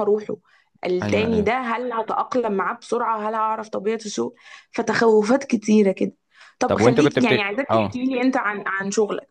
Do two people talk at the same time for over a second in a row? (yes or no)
yes